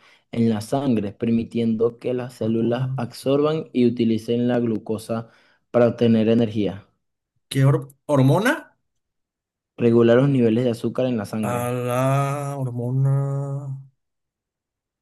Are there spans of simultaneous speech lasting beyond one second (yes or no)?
no